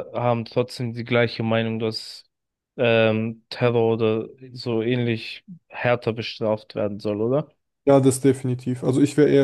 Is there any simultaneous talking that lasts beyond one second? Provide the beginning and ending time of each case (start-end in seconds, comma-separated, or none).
none